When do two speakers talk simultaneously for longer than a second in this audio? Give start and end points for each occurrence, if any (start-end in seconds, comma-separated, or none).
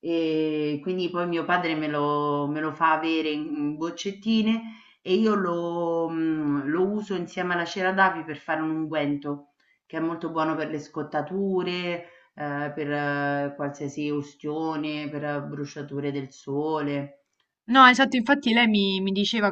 none